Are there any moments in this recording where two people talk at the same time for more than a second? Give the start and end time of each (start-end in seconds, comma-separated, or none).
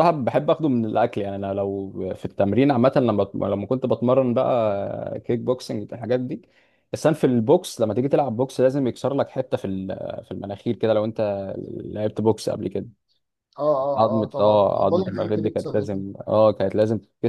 14.0-16.0